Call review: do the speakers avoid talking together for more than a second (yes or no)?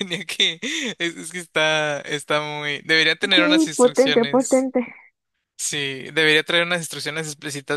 no